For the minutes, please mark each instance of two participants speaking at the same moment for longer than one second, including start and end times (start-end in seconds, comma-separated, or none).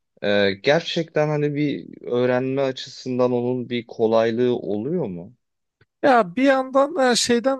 none